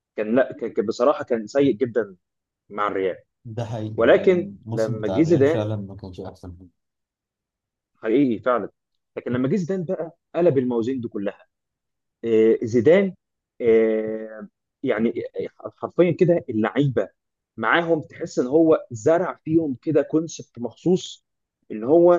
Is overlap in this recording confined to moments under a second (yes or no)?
no